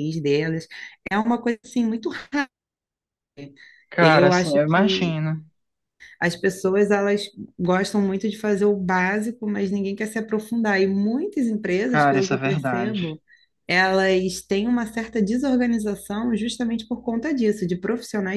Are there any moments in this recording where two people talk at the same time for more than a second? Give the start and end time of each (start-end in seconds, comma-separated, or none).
4.0-5.2, 11.9-13.2